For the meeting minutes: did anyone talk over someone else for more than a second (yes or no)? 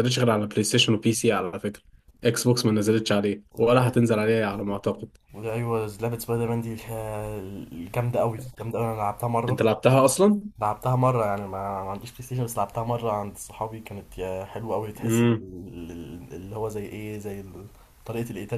no